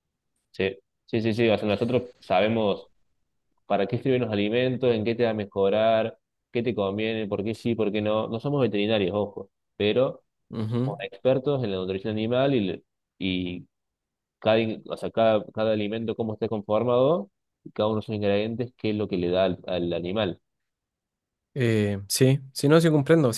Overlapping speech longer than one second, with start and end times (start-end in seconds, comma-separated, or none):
none